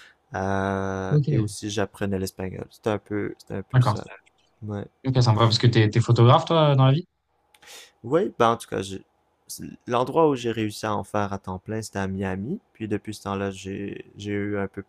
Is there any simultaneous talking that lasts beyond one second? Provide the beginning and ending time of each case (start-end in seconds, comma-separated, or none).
none